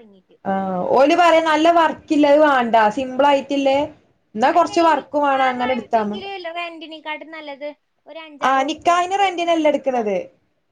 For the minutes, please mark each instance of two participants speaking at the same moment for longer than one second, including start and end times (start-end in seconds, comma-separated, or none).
8.5-10.1